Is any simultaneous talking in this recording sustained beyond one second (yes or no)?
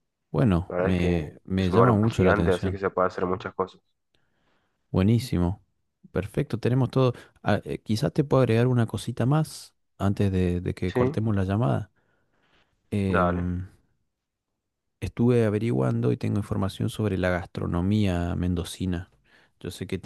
yes